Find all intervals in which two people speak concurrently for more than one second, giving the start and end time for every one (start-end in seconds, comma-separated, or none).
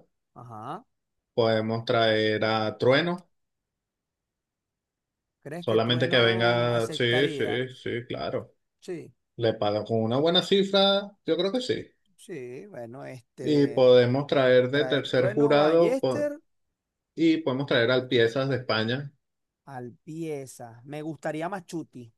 5.6-7.7, 14.7-16.3